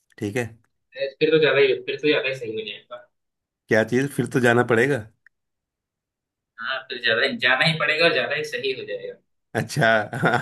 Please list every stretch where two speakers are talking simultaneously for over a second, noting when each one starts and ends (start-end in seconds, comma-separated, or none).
none